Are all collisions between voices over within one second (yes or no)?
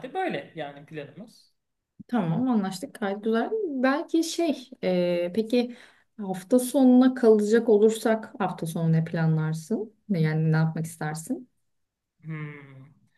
yes